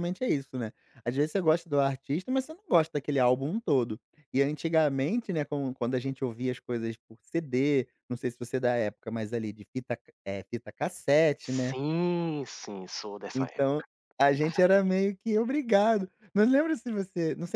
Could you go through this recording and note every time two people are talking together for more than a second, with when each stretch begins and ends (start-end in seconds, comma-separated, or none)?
none